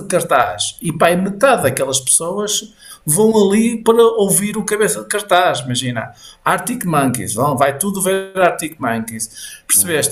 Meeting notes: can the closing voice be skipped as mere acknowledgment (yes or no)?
yes